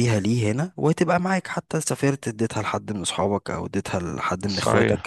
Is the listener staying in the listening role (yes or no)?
no